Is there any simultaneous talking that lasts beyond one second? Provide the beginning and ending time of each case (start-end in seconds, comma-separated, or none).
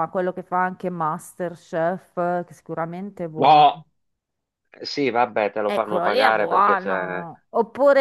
5.7-7.3